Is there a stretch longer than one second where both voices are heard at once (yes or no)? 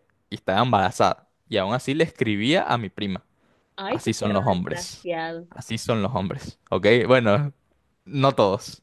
yes